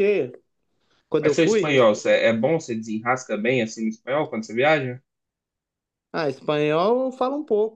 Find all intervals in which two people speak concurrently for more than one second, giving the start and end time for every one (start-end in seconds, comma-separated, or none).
none